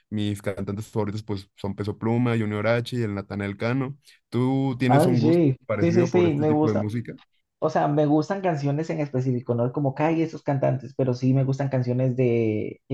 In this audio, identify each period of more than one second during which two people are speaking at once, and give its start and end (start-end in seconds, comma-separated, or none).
4.8-6.8